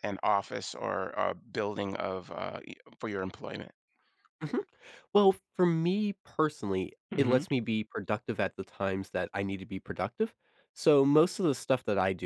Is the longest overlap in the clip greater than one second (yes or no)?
no